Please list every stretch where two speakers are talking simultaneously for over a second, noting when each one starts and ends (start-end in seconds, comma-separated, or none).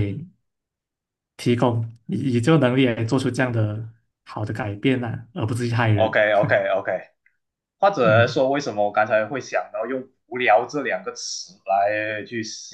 none